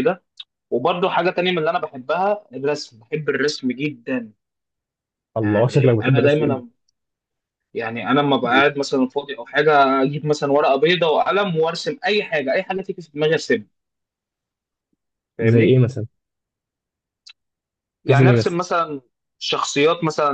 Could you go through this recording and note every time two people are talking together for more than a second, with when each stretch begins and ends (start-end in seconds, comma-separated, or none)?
5.4-6.6